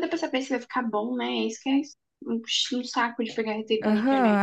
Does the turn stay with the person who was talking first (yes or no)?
no